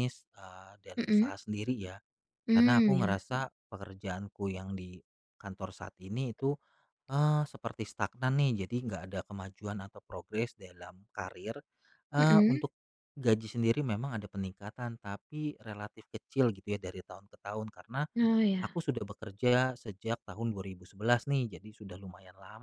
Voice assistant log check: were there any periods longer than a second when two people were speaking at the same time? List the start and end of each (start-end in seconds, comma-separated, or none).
none